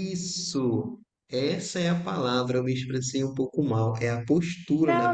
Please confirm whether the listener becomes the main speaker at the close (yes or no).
yes